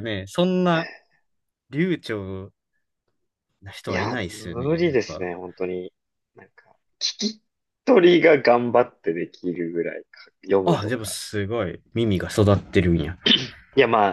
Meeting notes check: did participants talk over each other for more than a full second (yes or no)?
yes